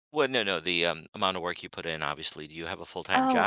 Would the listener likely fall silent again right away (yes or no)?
no